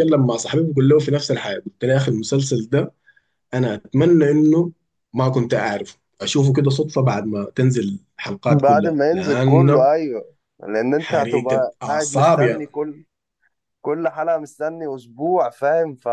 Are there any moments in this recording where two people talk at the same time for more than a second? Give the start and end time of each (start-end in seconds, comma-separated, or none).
8.5-9.9, 11.0-12.4